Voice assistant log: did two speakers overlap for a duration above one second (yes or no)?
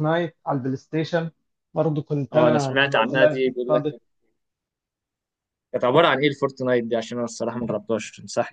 yes